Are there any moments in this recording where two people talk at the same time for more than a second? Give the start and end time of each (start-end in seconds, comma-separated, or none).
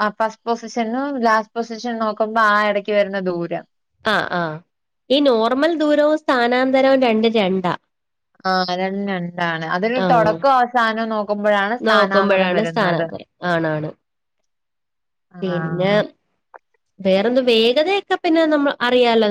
none